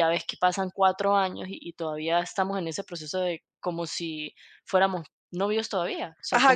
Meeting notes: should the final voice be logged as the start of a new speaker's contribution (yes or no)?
yes